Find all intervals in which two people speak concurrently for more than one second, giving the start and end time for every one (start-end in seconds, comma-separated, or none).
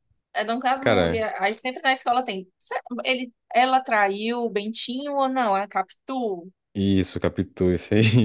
none